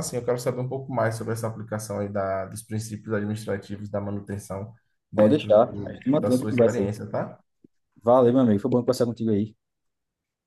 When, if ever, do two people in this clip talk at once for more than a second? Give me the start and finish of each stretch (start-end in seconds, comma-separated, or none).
5.1-6.9